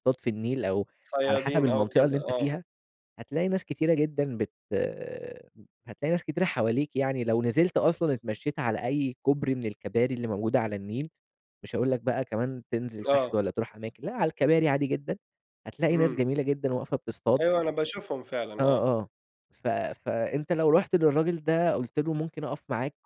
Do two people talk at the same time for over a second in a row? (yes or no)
yes